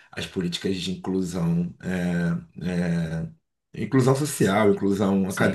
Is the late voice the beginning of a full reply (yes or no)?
yes